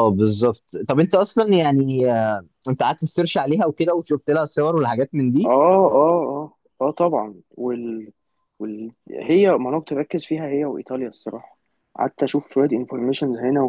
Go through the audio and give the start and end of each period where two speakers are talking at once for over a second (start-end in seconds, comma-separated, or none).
none